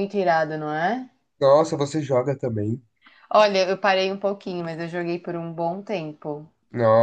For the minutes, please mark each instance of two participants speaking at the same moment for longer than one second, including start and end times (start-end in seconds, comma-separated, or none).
none